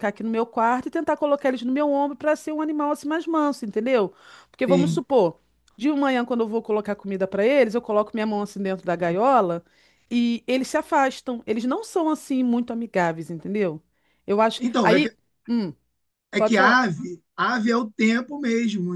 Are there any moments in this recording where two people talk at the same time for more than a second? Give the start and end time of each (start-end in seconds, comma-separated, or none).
none